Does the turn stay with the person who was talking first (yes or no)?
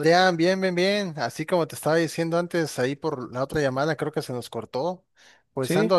yes